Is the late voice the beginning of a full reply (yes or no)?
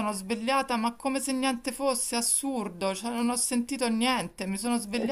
no